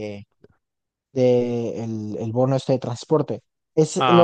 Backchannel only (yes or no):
yes